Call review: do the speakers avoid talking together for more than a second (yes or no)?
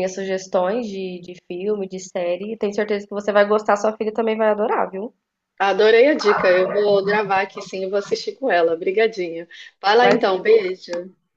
yes